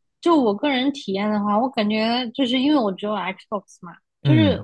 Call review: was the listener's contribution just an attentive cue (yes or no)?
yes